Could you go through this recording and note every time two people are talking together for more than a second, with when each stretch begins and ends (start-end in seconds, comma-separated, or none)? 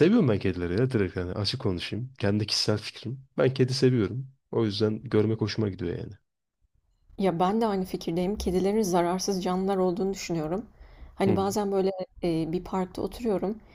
none